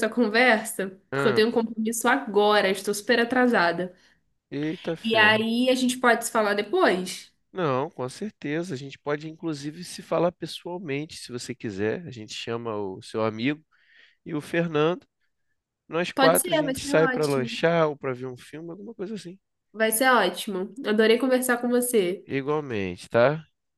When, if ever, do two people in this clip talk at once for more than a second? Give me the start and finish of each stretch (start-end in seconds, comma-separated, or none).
16.1-17.5